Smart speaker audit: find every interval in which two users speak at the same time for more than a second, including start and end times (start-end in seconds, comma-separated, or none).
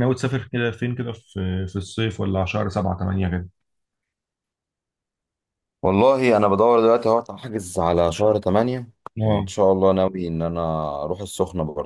none